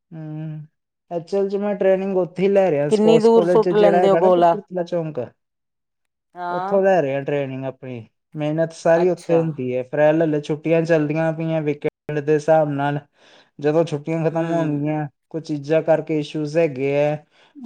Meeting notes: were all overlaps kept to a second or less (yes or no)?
no